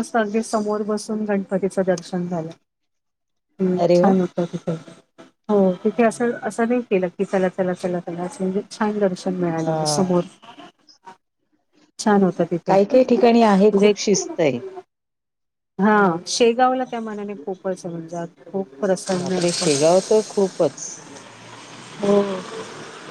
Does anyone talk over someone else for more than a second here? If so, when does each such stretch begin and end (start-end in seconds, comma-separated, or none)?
none